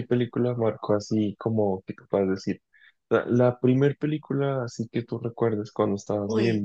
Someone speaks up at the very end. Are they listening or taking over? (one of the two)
taking over